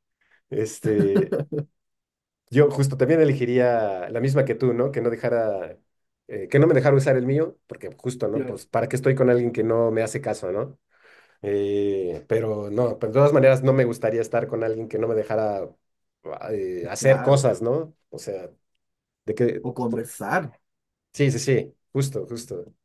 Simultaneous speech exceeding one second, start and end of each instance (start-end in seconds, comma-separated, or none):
none